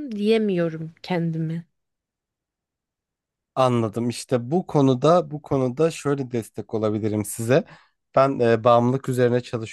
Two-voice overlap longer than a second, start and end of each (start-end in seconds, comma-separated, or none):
none